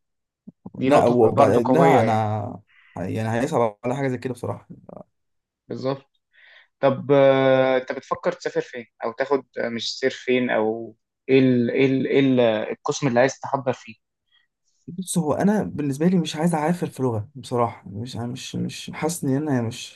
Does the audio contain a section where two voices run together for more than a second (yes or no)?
yes